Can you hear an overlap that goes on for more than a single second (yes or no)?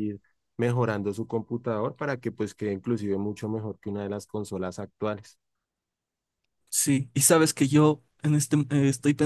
no